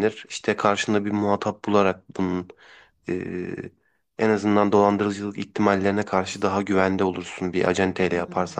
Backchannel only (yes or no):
no